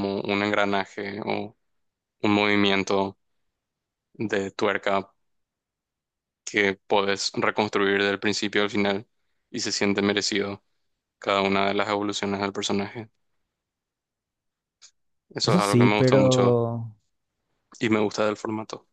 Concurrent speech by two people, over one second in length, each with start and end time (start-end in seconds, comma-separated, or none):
15.4-16.6